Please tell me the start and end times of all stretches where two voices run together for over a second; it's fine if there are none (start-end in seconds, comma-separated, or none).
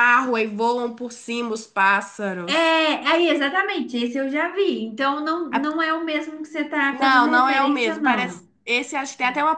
6.9-8.4